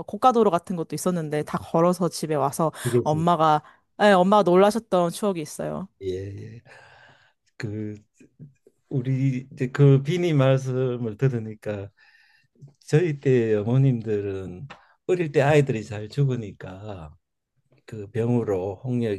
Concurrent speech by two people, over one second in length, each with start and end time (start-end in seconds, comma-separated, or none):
none